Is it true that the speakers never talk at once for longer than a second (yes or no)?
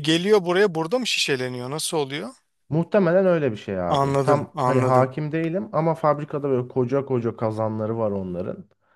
no